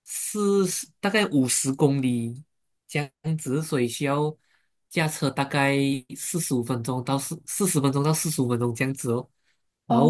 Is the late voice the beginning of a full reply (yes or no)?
no